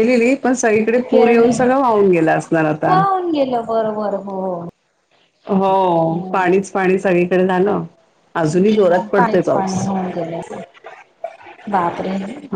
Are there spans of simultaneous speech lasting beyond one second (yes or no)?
yes